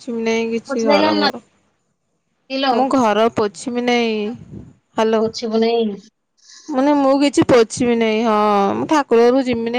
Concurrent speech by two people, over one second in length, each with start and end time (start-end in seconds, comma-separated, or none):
none